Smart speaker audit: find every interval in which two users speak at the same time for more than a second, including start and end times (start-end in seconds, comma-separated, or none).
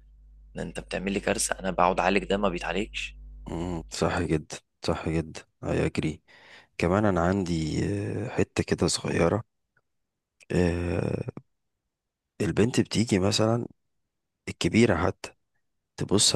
none